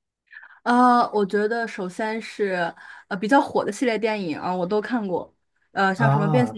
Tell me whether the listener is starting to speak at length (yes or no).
no